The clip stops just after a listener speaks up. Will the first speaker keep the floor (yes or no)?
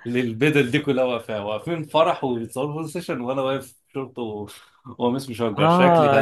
no